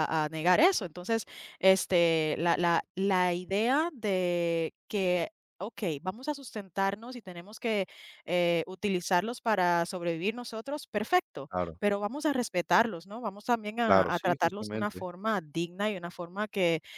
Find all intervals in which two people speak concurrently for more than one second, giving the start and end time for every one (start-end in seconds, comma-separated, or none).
13.9-15.1